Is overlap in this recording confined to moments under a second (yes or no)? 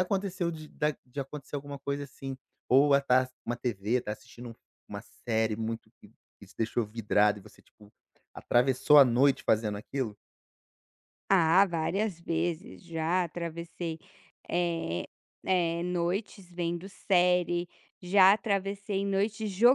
yes